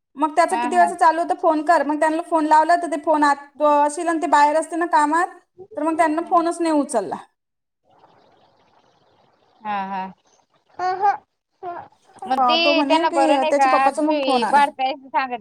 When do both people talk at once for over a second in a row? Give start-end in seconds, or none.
12.4-14.6